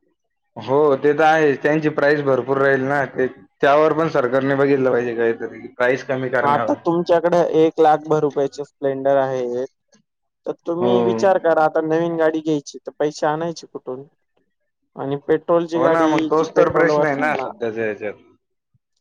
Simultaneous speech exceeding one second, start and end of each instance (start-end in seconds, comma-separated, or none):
15.8-17.5